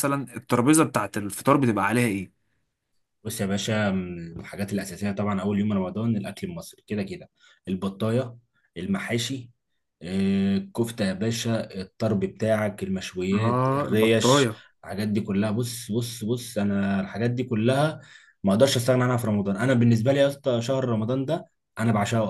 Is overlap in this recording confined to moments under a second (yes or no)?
no